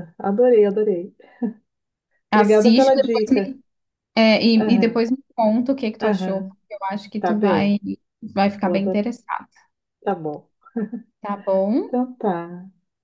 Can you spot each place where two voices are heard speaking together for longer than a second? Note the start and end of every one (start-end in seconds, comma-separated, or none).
2.3-3.5